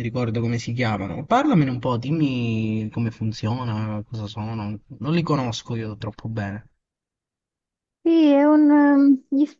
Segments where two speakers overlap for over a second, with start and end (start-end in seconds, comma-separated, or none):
none